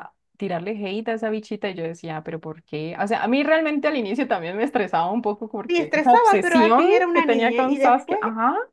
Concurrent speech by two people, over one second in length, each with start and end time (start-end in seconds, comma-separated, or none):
5.7-8.2